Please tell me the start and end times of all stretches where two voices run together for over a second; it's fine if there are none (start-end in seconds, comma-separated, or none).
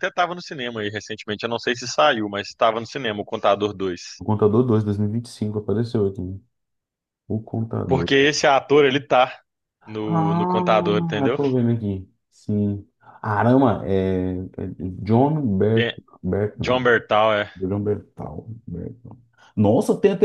9.9-11.4